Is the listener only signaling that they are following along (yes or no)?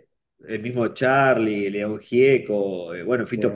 yes